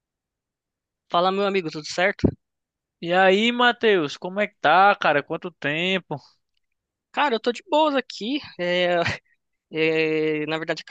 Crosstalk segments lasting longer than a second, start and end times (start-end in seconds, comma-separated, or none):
none